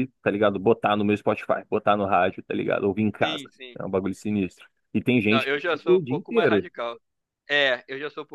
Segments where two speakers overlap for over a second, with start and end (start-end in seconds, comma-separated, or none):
5.3-6.7